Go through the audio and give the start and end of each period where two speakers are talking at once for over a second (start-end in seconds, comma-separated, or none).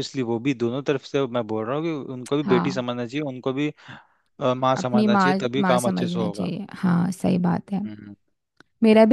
4.8-6.5